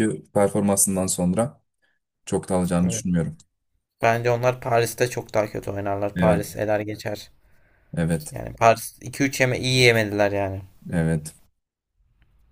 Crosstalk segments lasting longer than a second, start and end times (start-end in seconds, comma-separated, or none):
none